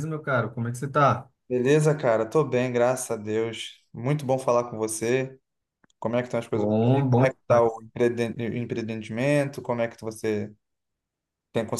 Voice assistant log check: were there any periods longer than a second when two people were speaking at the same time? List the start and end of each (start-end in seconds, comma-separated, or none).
6.5-7.8